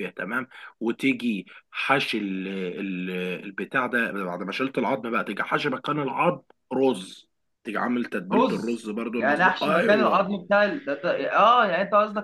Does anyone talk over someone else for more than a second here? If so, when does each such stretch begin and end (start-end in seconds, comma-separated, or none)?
8.3-10.3